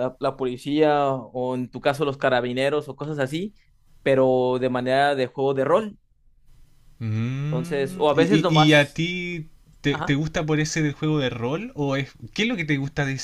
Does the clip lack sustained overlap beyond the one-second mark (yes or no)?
no